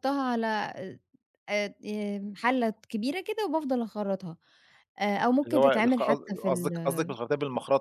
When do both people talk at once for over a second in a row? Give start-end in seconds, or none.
5.5-7.1